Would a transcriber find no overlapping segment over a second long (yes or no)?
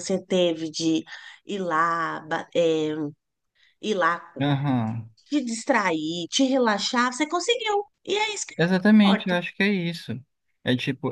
yes